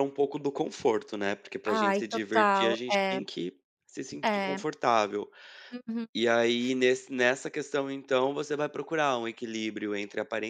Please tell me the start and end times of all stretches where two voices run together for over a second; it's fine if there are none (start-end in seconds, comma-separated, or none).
1.8-3.2